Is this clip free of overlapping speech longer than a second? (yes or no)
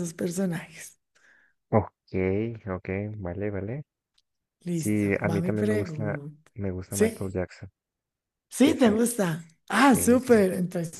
no